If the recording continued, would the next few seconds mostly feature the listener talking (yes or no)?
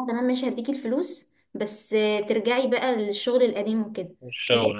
no